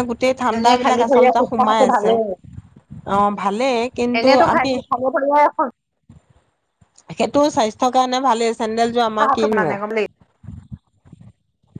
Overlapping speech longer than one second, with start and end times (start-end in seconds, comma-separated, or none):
0.6-2.1